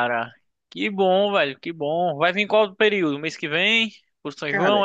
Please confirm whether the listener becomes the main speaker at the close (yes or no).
yes